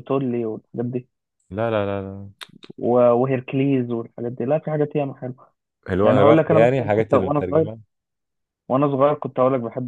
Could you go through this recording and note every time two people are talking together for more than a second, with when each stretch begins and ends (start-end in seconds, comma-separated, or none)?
6.0-7.7